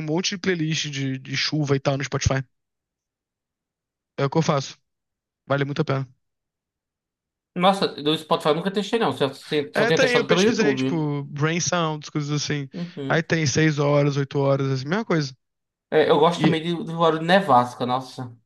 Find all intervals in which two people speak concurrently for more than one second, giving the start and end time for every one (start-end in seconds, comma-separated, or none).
9.7-11.1